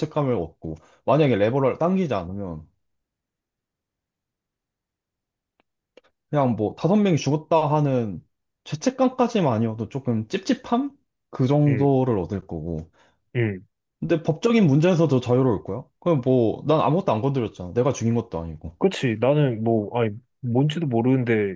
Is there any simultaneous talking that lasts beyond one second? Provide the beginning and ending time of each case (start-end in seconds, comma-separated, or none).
none